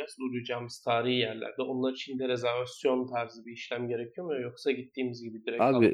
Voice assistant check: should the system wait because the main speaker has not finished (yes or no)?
no